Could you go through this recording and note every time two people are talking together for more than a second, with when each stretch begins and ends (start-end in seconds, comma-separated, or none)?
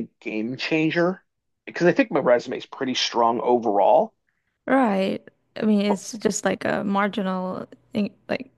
none